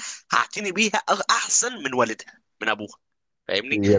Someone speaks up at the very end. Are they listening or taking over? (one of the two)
taking over